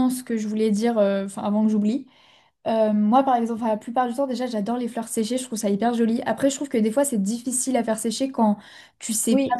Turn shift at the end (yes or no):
no